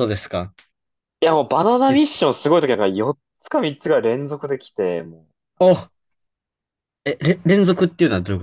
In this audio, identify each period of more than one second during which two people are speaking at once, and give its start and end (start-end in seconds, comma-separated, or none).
none